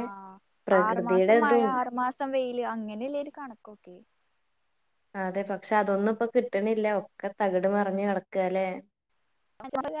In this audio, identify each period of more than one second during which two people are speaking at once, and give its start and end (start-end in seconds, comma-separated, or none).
none